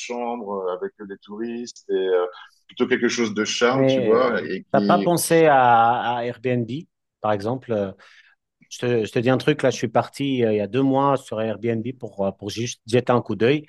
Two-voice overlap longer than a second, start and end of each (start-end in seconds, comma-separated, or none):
3.7-5.2